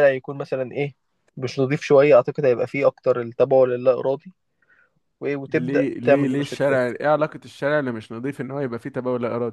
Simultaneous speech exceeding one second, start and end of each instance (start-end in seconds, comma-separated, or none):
5.5-6.8